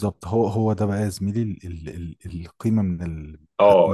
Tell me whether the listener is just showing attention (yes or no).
no